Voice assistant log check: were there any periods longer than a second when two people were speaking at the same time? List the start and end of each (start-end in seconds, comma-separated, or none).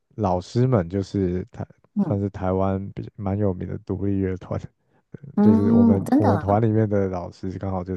5.4-6.7